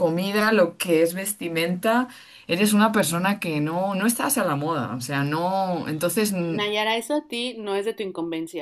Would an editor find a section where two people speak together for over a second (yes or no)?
no